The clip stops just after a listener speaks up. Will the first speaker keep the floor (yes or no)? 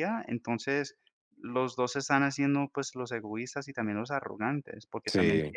yes